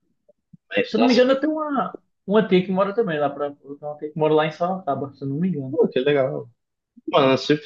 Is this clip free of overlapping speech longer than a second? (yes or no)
yes